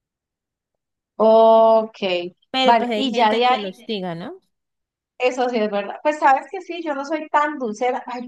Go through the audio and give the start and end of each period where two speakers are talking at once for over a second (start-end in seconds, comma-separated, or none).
2.6-4.0